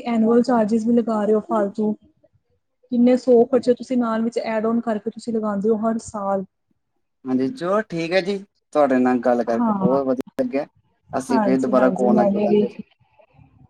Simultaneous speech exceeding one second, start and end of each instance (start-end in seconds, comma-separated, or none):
11.3-12.7